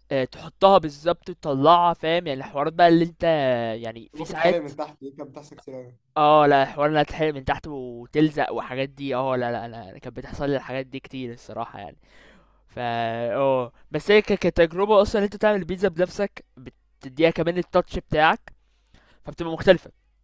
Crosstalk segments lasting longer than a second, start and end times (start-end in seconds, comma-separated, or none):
none